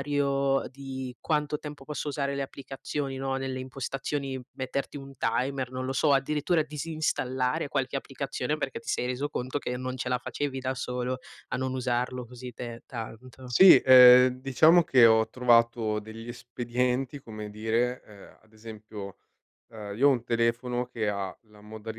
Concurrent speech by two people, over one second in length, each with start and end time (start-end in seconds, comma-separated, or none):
none